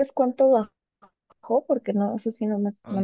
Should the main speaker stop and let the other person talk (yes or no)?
yes